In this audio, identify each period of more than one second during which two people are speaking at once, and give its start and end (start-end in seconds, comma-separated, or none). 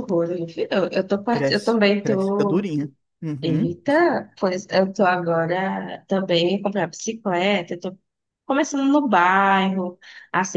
1.3-2.7